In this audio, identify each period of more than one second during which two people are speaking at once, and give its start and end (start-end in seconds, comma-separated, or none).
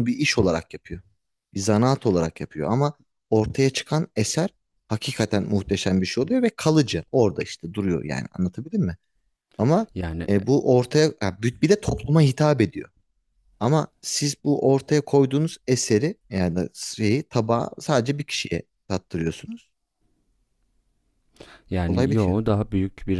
none